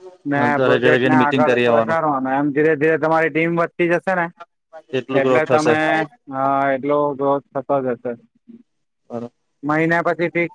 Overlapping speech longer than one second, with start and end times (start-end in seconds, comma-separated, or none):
0.6-2.0